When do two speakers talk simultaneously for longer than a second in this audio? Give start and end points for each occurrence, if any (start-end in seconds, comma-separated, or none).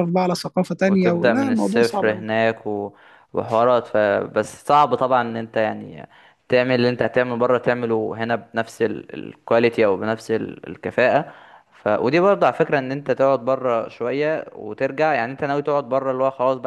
0.8-2.2